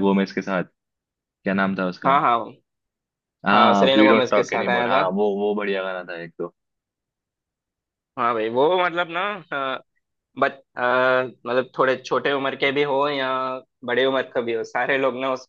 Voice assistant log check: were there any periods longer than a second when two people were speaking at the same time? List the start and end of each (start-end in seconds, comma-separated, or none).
3.5-5.0